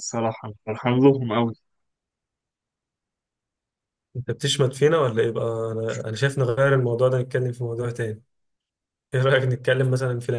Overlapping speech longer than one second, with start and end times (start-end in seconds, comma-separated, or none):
none